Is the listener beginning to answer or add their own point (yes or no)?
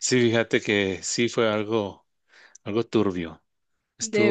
no